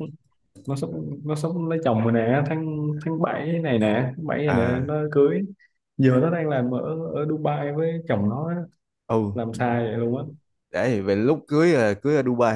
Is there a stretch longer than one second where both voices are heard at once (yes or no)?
no